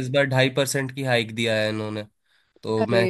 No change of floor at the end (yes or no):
yes